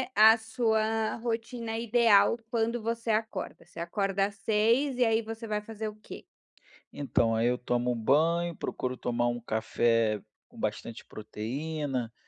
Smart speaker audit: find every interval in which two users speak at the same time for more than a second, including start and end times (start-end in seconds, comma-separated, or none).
none